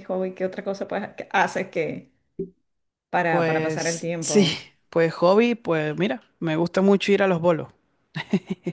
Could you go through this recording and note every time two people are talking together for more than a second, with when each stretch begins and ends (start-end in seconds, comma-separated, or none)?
3.3-4.5